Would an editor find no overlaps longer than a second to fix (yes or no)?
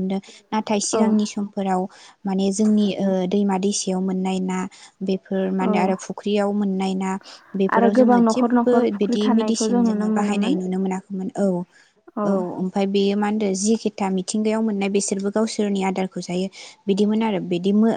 no